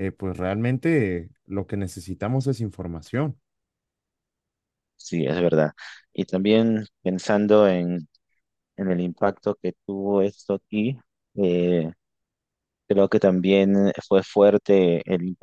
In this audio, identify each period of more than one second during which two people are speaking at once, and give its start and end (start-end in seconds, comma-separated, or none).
none